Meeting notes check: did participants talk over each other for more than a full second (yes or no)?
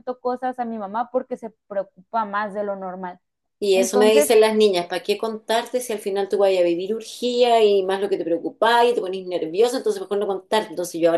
no